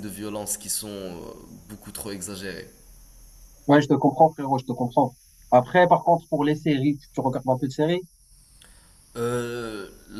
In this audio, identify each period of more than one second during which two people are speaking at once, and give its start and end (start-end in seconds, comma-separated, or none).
none